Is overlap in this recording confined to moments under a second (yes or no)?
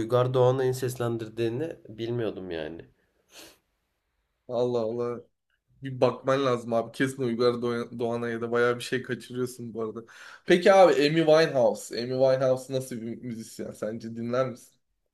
yes